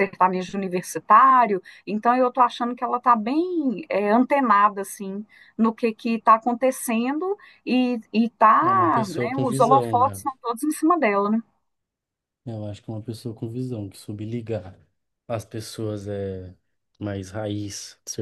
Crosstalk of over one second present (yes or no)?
yes